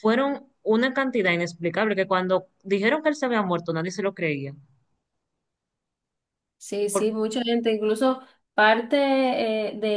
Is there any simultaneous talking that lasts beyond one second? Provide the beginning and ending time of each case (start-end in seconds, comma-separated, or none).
none